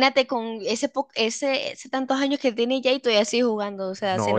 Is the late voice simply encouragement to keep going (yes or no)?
no